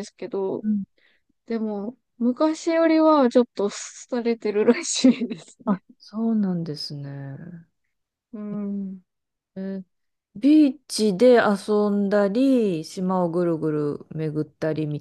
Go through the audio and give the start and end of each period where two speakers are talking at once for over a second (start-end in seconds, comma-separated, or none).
none